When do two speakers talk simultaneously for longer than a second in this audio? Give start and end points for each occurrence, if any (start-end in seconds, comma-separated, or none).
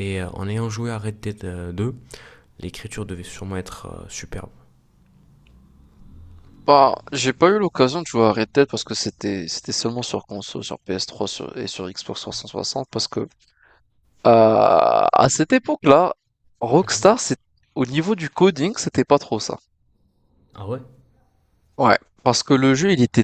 none